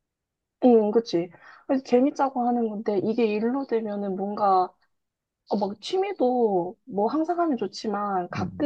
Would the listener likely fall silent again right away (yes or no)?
yes